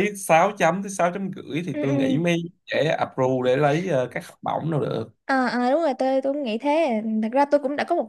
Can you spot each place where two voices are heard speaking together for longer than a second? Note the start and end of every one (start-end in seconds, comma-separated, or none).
none